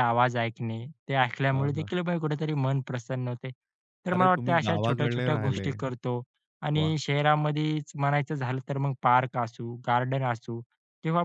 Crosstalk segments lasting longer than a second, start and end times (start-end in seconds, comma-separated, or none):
4.2-5.7